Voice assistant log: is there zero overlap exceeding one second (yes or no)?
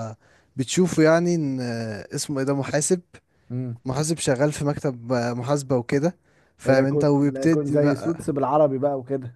no